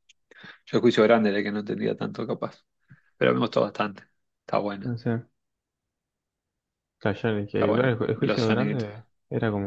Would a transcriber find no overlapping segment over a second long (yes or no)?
no